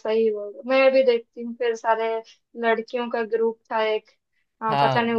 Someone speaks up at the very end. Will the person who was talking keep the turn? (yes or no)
yes